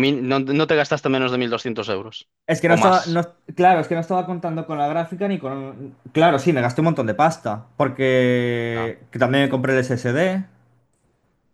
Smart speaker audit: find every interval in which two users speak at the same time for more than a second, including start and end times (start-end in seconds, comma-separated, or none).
none